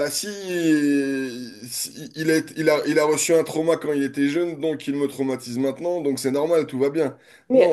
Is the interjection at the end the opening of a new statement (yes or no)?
yes